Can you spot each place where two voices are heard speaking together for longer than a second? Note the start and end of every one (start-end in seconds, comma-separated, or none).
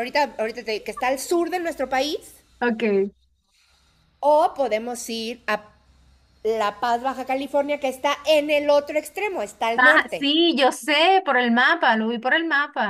none